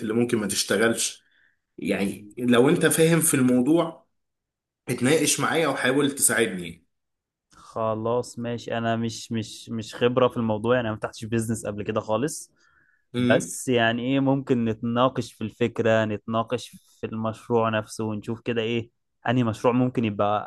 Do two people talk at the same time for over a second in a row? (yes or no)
no